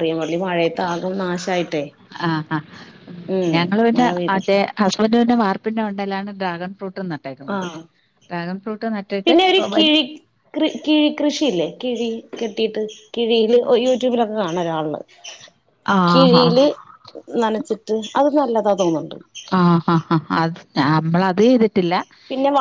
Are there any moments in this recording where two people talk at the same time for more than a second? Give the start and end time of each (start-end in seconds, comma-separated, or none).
none